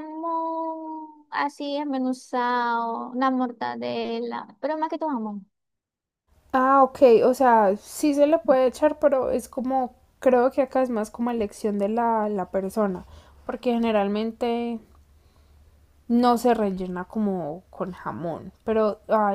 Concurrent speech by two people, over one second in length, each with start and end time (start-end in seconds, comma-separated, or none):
none